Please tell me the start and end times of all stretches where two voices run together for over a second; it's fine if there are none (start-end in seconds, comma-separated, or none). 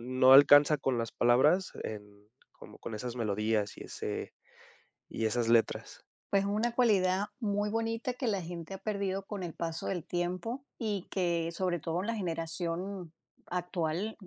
none